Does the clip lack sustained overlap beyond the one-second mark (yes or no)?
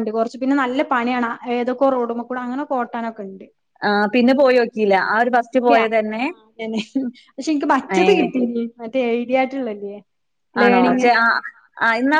yes